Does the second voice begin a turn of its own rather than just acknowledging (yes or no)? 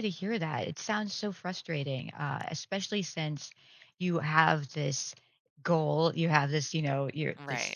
no